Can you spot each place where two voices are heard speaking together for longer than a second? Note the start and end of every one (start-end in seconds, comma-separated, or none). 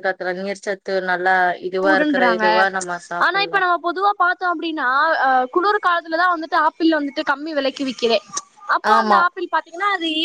none